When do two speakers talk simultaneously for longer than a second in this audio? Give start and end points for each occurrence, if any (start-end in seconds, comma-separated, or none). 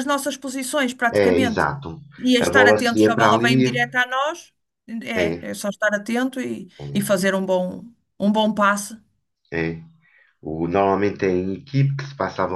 2.4-3.7